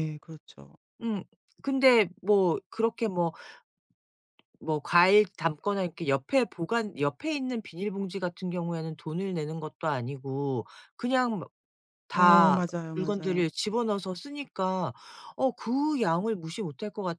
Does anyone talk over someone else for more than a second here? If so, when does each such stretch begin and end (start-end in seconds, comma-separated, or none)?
12.1-13.5